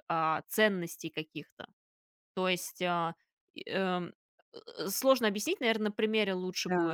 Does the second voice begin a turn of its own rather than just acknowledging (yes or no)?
yes